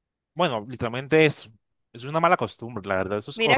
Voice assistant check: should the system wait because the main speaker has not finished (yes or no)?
no